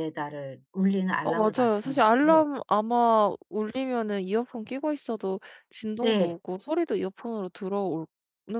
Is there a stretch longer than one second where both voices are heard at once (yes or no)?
yes